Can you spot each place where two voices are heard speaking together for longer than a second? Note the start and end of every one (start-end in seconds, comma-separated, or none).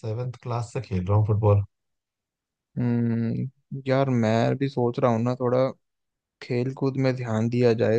none